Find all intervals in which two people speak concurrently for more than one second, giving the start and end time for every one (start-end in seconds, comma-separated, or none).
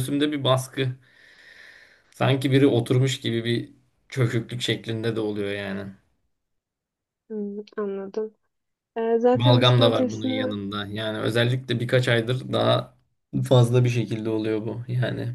9.3-10.6